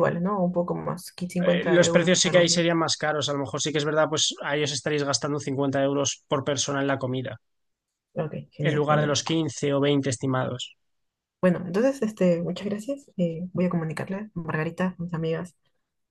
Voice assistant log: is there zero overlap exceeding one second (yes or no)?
no